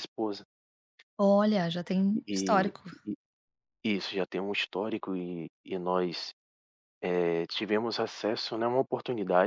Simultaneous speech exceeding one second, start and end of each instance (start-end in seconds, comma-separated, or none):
none